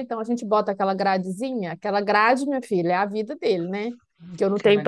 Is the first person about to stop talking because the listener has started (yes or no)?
no